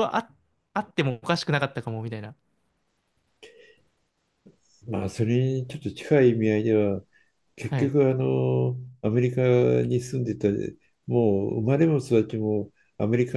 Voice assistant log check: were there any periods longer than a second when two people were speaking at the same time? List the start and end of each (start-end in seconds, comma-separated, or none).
none